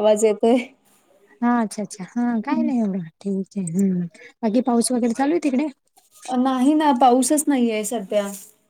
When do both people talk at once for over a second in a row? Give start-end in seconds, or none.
none